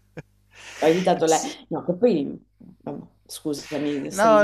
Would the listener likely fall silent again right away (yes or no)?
no